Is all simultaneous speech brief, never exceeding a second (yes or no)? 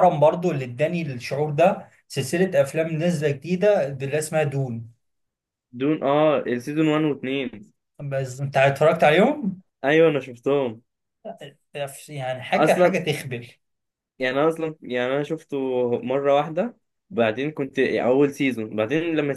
yes